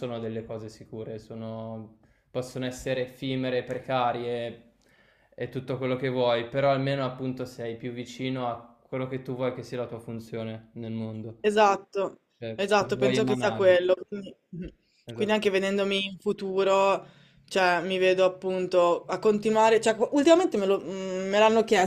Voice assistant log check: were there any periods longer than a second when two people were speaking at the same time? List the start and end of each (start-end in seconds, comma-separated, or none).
12.4-13.7